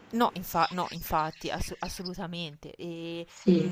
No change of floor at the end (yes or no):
yes